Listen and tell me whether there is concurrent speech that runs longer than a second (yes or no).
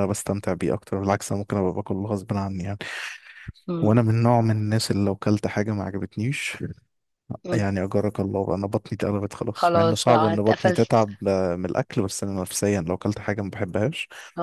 yes